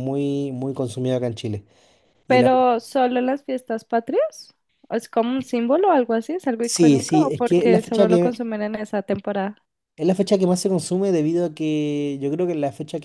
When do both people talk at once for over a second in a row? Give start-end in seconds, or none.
6.6-8.4